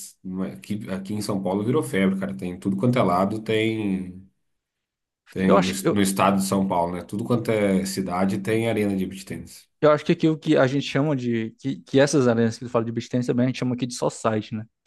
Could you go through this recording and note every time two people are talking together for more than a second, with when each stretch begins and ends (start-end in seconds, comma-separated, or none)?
none